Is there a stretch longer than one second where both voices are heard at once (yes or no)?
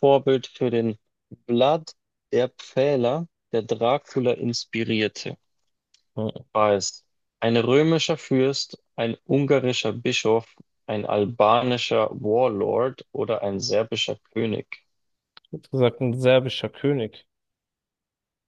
no